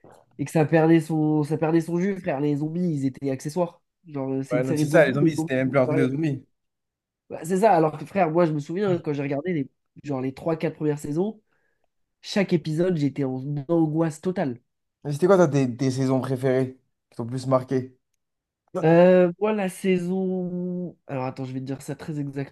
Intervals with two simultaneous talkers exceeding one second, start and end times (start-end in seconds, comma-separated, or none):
4.5-6.1